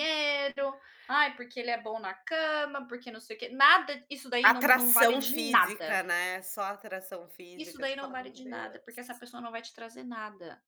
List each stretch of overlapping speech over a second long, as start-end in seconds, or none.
4.4-6.0, 7.6-9.2